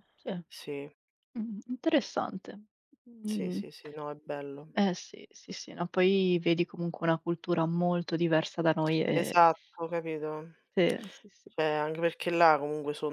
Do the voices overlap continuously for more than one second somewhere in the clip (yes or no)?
no